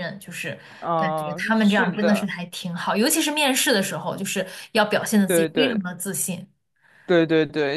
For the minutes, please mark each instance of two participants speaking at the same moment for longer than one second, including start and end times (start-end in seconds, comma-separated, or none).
1.0-2.3